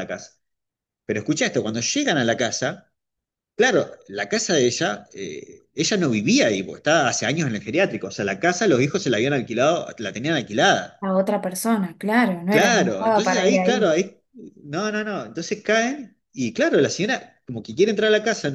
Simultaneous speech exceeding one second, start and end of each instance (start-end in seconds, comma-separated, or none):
12.5-13.9